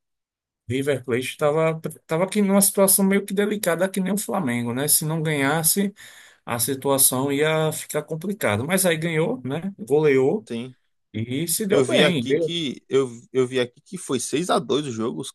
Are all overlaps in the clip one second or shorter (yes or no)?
yes